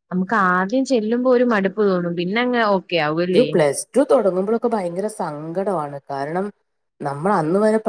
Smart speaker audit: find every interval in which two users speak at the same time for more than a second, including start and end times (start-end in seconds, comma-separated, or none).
none